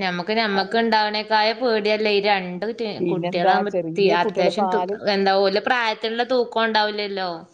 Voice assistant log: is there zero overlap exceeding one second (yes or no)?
no